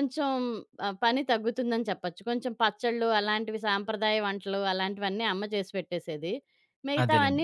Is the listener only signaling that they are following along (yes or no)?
yes